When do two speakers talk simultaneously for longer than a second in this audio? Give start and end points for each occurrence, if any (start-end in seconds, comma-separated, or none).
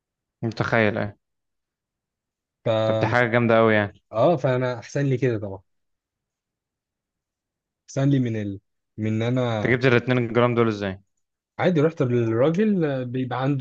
none